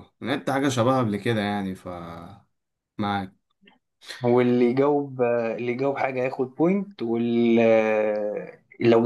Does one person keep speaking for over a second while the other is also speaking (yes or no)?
no